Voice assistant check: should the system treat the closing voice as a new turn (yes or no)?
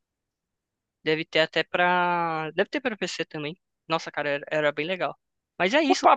yes